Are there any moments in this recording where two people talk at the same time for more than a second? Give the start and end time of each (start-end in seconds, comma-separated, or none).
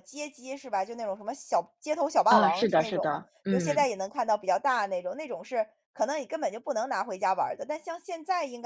2.3-3.9